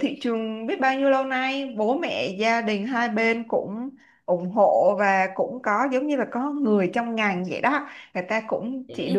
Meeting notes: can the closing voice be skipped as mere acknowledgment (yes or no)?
yes